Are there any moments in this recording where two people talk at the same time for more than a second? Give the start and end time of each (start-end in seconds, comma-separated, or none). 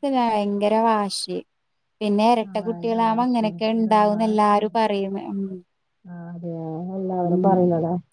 2.5-4.7